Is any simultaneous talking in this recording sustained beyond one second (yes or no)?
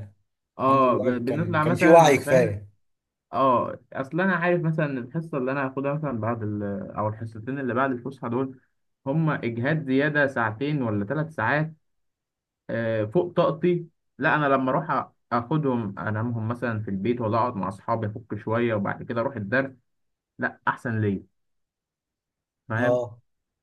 yes